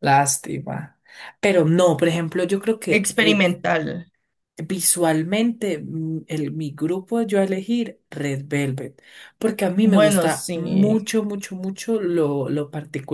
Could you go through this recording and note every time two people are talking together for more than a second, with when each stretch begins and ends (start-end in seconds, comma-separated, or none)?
9.8-11.1